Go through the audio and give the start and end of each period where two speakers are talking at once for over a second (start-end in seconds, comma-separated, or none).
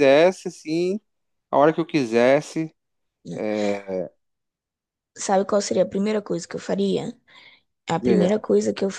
none